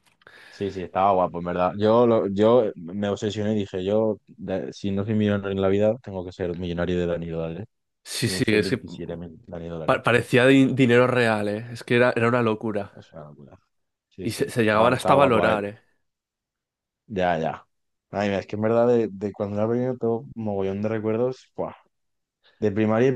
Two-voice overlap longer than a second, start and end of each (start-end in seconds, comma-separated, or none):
14.2-15.6